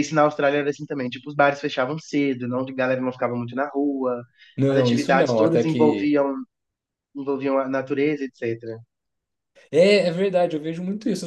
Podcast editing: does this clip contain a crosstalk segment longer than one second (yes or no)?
yes